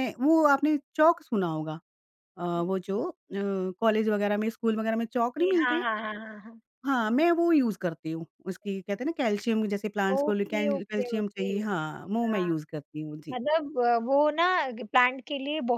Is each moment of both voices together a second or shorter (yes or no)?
no